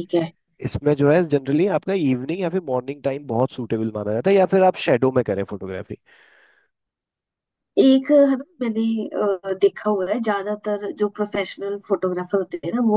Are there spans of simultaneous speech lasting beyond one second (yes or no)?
no